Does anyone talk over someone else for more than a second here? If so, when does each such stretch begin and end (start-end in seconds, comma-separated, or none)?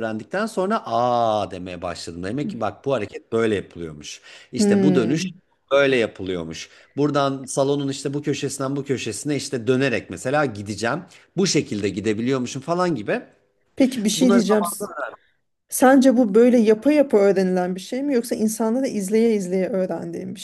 none